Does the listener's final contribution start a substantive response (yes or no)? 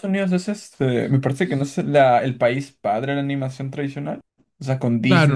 yes